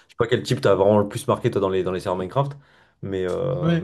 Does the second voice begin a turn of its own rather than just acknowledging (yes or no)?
yes